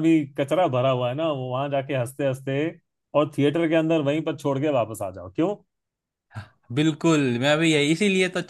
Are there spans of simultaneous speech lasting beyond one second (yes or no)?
no